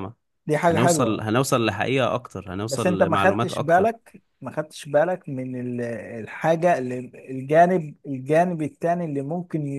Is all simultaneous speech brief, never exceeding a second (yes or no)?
no